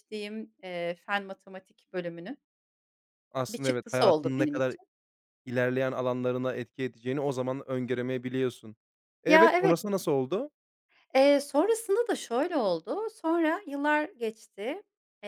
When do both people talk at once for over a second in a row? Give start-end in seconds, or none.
3.5-4.8